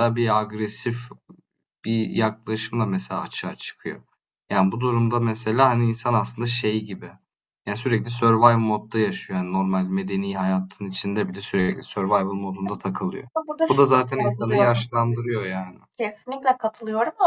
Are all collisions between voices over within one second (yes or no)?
no